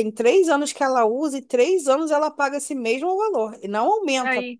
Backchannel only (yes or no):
yes